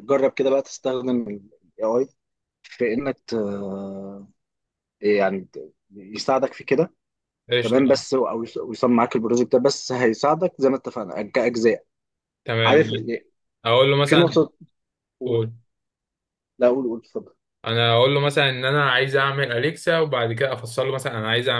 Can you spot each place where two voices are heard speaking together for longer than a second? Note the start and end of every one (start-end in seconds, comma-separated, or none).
none